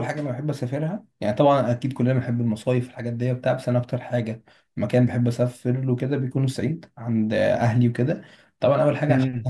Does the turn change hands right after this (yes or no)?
no